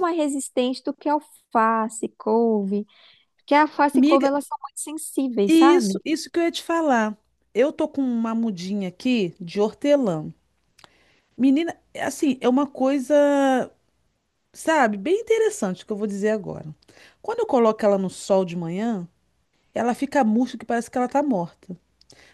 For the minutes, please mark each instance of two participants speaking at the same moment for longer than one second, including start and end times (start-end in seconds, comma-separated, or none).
none